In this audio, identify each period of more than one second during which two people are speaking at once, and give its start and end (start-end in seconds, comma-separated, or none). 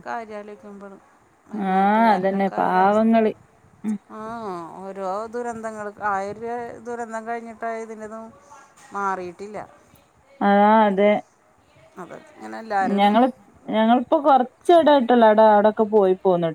1.7-3.1